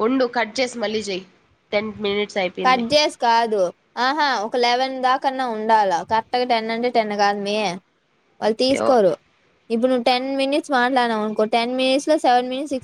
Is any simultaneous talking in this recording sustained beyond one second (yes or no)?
no